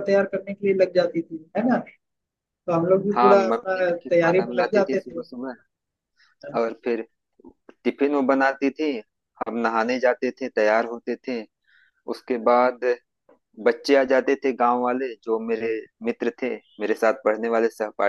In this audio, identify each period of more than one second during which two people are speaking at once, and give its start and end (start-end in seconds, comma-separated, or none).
3.2-5.2